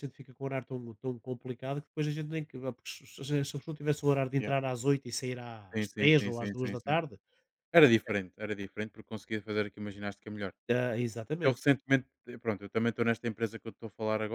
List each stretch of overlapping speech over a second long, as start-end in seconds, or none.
5.7-7.0